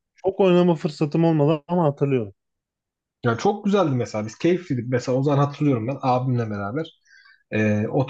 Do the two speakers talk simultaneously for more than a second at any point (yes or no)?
no